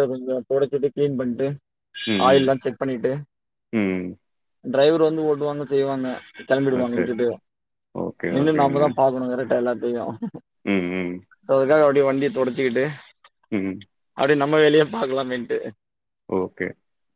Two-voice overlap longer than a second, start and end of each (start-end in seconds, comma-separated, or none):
none